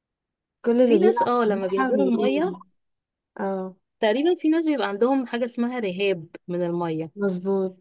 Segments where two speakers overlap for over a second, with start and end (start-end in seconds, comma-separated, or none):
0.8-2.6